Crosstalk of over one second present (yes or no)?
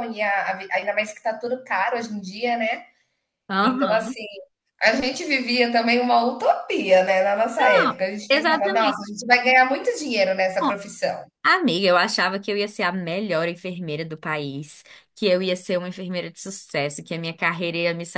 yes